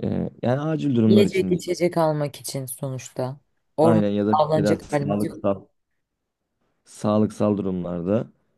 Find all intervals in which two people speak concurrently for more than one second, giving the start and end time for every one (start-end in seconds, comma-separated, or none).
3.8-5.4